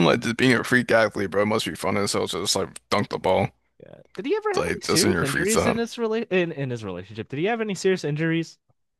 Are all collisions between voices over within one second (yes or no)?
no